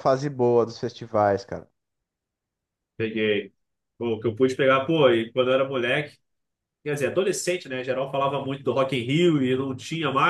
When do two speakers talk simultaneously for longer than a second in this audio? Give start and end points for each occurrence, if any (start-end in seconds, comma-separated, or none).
none